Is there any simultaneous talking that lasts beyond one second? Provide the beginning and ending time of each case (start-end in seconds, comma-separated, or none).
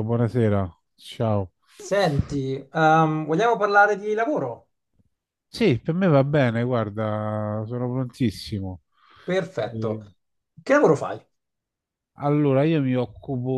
none